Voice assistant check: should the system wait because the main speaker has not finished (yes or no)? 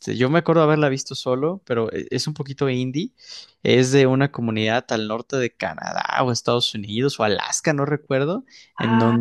yes